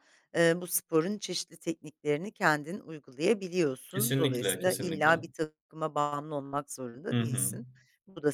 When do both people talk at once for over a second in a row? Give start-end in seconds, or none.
3.9-5.2